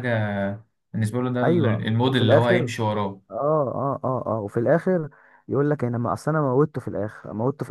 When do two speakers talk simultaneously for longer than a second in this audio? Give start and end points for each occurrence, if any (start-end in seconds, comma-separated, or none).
1.4-2.7